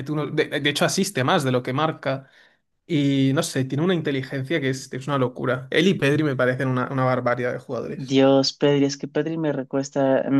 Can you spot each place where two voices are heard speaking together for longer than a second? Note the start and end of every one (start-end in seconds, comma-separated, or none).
none